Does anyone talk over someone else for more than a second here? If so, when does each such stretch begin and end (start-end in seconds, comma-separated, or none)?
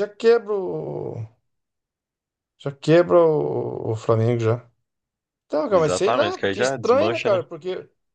5.7-7.4